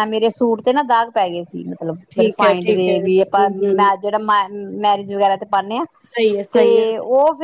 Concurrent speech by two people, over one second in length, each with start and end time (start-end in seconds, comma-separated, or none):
2.1-3.9